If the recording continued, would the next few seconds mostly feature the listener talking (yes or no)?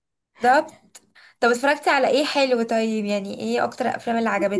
yes